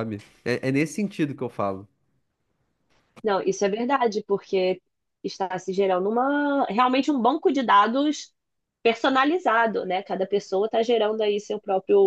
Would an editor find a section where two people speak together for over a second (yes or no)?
no